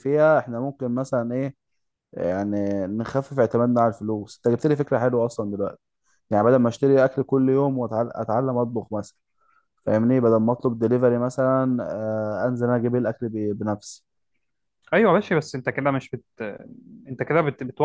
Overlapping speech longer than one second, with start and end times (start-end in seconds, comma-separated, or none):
none